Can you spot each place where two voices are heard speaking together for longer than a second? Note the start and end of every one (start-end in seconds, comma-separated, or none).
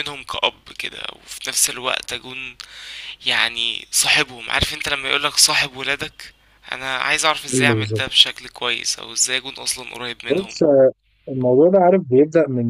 none